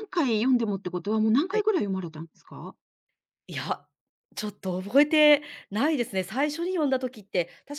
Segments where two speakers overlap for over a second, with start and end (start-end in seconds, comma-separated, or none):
none